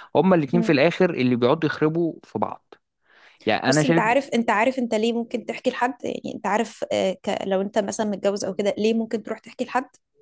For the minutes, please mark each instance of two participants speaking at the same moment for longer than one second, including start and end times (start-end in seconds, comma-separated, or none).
none